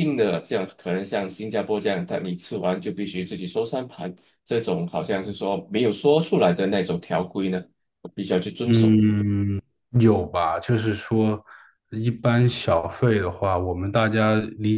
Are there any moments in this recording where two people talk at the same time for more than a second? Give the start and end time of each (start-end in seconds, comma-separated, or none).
none